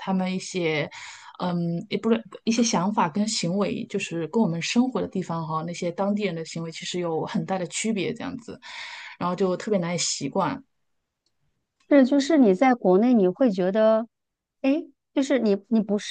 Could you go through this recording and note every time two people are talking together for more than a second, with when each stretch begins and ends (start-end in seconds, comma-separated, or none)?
none